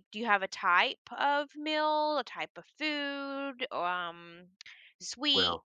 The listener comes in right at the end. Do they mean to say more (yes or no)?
no